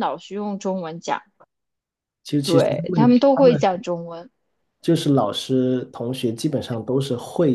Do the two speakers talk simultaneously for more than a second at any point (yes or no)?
yes